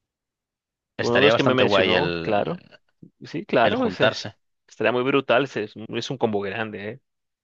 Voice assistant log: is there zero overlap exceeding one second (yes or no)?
no